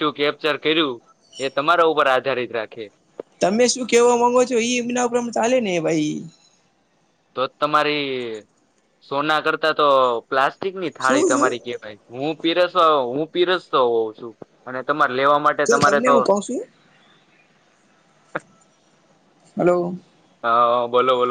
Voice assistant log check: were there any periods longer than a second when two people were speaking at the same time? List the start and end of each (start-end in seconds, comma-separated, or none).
none